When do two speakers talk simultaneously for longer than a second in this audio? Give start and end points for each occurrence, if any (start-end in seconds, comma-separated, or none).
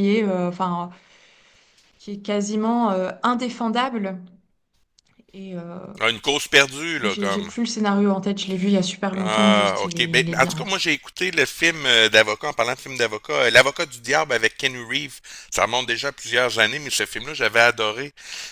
9.2-10.8